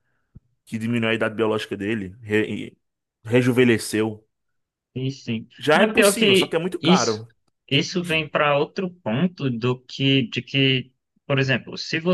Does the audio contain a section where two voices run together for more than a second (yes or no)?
yes